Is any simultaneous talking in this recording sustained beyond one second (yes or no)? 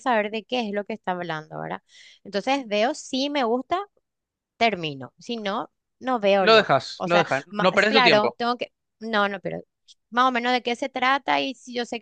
yes